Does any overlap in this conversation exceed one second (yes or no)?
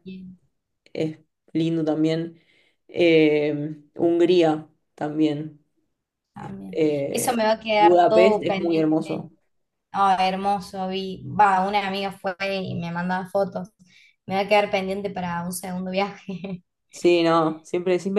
yes